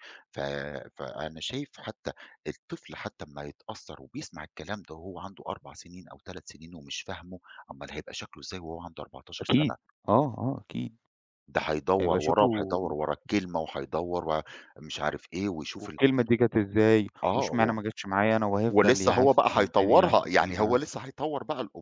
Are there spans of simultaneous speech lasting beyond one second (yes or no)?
yes